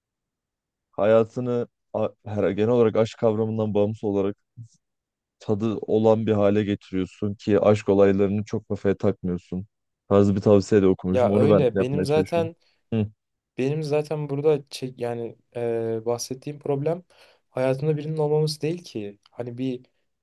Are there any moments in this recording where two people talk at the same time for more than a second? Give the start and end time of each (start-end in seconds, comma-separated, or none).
11.1-12.5